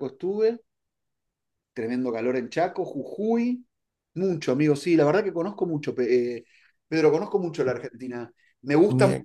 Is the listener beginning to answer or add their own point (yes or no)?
no